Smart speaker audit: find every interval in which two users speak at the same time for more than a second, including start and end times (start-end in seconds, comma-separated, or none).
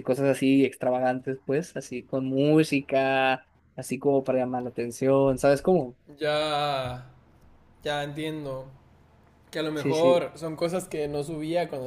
none